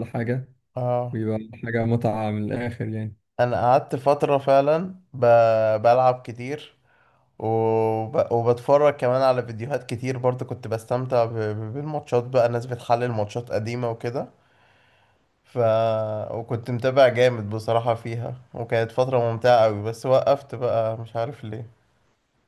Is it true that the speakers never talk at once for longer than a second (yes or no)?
yes